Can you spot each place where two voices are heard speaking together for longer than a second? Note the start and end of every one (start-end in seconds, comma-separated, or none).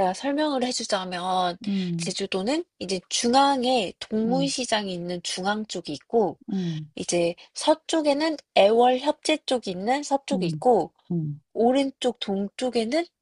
none